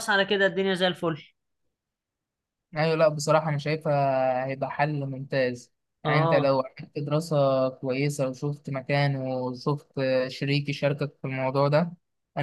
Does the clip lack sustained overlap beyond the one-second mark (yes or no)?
yes